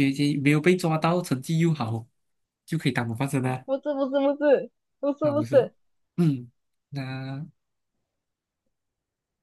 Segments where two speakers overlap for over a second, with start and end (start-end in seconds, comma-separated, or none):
none